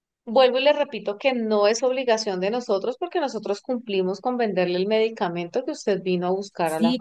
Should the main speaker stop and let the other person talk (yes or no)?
yes